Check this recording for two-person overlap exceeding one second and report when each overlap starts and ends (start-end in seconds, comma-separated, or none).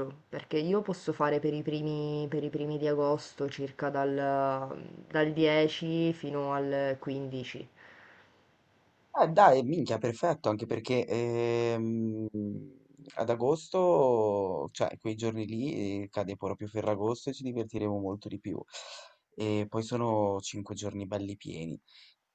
none